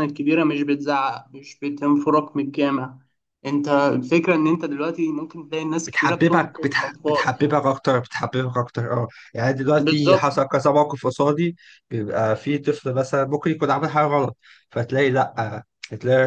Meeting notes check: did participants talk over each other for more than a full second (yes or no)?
yes